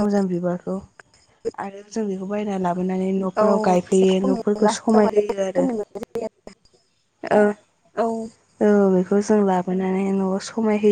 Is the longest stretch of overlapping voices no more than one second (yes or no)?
no